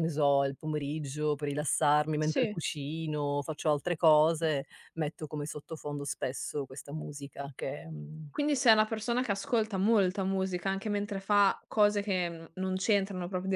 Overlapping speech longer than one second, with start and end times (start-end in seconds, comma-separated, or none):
none